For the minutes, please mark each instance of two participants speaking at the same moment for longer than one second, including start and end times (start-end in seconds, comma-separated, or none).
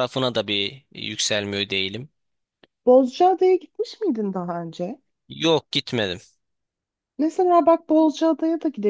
none